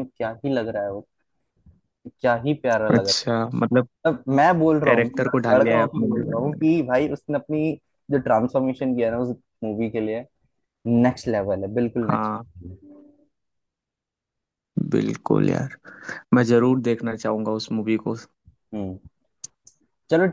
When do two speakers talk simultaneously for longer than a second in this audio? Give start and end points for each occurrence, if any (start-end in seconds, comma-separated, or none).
4.8-6.4